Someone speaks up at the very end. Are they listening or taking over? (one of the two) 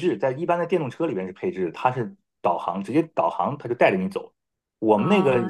taking over